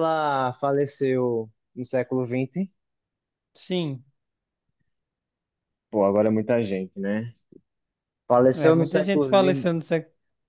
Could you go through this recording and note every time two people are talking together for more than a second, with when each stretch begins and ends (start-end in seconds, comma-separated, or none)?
8.5-9.7